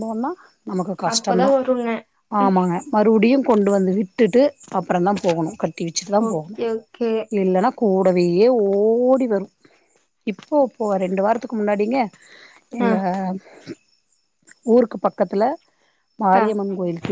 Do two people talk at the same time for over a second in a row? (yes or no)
no